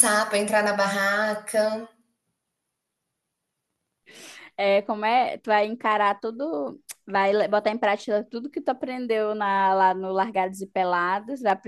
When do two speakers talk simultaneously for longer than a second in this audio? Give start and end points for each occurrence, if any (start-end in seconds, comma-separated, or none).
none